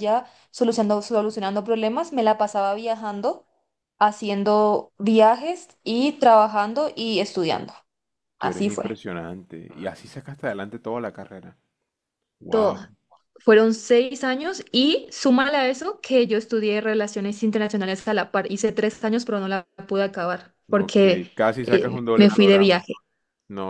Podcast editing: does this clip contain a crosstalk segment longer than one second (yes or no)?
yes